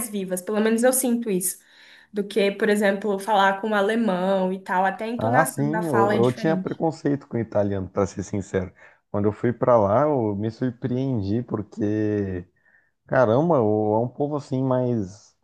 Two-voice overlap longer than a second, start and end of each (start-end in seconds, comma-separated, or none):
5.2-6.8